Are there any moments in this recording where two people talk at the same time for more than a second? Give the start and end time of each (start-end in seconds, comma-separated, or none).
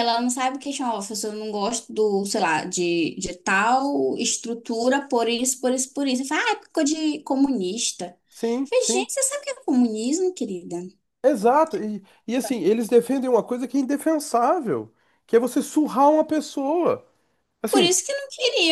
none